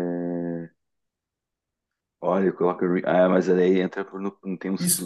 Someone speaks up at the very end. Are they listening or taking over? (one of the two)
taking over